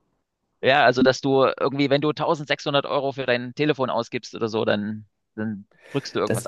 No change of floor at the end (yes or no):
no